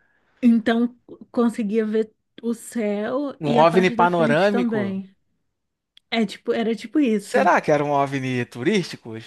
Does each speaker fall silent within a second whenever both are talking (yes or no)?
no